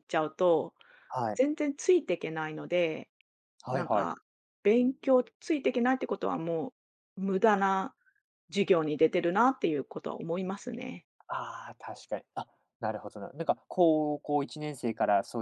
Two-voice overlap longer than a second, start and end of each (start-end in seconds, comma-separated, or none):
none